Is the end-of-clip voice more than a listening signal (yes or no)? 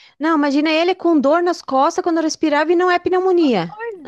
yes